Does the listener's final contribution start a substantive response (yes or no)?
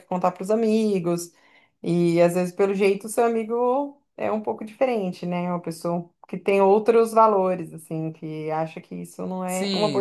yes